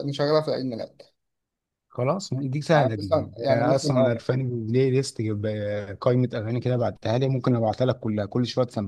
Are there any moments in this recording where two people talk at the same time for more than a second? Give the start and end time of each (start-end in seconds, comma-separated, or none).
2.7-4.3